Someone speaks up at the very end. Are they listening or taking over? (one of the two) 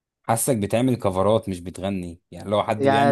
taking over